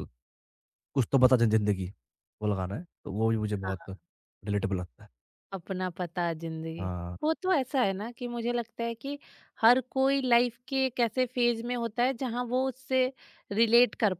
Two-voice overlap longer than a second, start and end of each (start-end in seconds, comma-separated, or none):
none